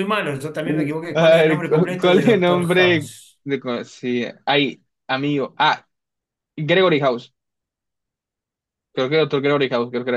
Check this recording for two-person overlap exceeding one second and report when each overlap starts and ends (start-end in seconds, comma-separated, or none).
1.1-3.4